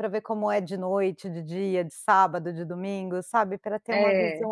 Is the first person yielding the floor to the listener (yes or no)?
no